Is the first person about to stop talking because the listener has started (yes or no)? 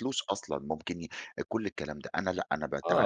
yes